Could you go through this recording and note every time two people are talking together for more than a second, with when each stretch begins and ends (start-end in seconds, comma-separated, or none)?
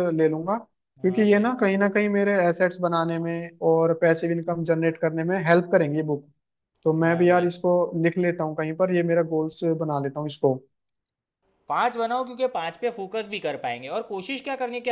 none